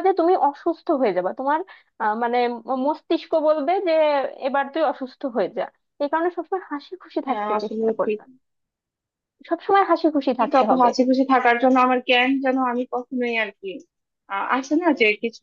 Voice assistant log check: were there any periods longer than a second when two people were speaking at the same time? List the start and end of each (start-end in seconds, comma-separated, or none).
none